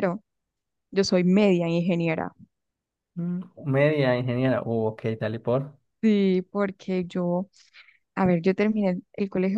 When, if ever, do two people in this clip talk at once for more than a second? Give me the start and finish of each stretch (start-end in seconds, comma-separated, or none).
none